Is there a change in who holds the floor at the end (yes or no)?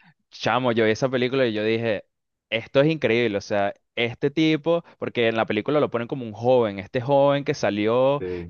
no